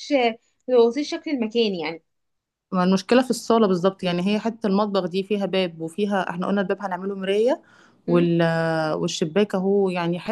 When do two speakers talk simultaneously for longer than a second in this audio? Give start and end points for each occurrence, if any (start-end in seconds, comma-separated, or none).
none